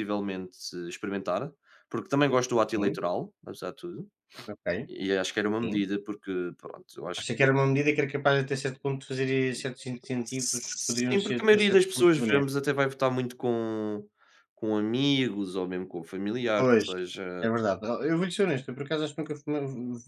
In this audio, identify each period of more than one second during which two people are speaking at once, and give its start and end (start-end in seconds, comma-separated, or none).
10.2-12.7